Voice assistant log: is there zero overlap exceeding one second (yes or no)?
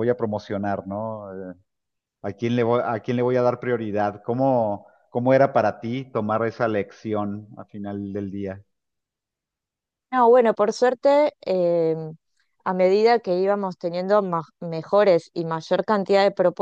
yes